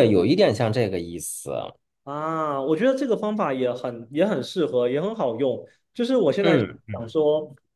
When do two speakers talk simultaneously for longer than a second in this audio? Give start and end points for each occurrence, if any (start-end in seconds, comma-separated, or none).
none